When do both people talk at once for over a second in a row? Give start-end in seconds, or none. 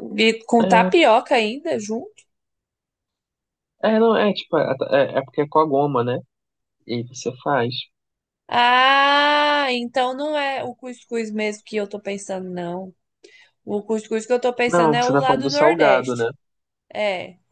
14.6-16.3